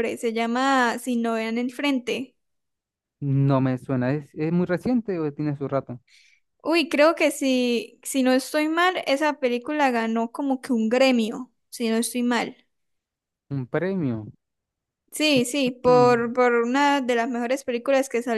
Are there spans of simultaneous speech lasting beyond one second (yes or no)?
no